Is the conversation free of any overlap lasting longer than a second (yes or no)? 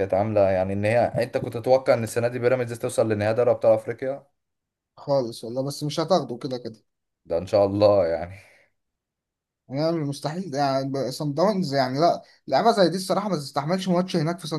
yes